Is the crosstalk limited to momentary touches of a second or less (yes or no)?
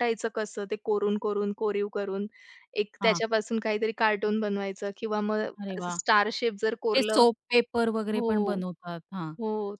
yes